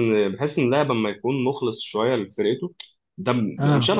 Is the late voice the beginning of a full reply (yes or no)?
no